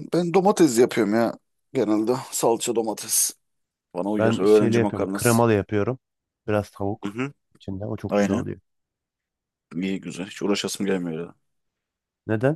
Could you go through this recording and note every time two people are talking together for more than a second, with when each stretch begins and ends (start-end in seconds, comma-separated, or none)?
4.2-5.4